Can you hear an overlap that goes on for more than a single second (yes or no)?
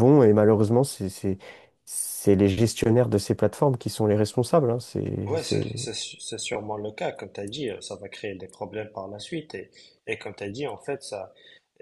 no